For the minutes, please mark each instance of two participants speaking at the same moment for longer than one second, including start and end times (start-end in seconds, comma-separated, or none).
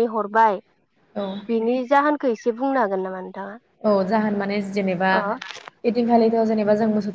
none